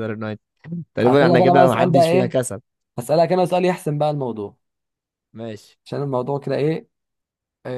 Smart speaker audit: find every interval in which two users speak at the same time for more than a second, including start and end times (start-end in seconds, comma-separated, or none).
1.0-2.4